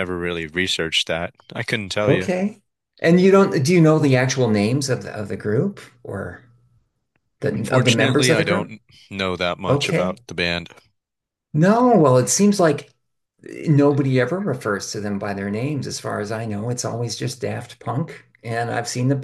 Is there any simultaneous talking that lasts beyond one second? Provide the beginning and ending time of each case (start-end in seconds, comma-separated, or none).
7.5-8.7